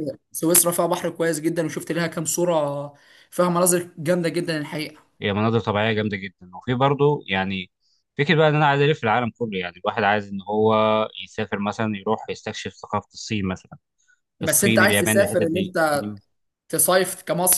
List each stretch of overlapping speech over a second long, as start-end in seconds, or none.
14.4-15.7